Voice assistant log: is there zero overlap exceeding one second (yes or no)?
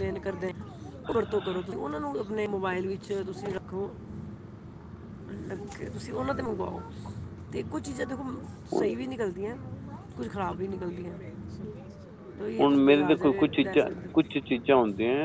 no